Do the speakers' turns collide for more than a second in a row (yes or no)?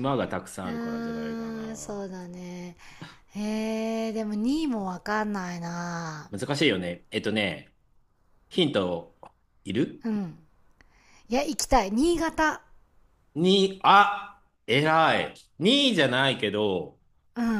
yes